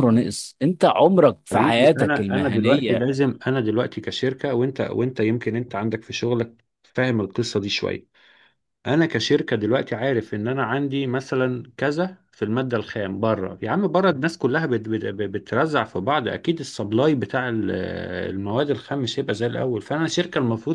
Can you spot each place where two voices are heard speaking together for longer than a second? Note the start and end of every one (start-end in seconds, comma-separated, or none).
1.5-3.0